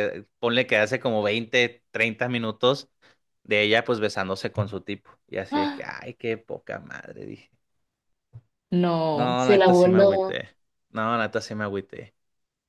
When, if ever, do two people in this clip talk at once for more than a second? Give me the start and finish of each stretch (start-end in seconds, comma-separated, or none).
9.1-10.4